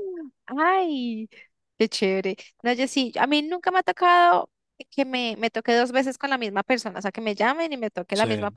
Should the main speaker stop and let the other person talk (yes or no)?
no